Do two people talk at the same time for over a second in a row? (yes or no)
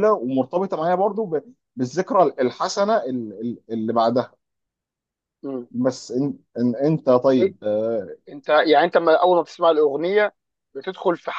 no